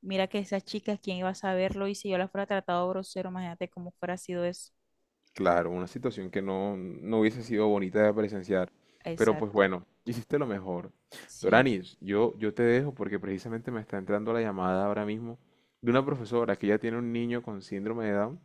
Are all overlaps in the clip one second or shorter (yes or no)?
yes